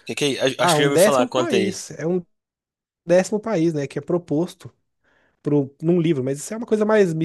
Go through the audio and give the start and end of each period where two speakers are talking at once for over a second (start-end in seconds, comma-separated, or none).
0.6-1.8